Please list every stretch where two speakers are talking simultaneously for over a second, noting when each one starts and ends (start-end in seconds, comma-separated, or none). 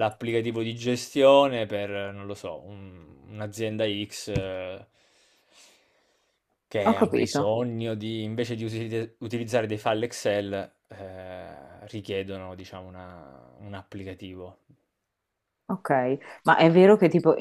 none